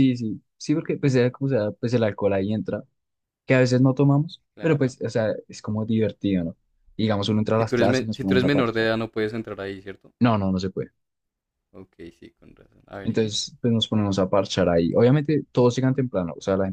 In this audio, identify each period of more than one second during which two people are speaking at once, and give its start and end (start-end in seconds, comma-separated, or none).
7.5-8.9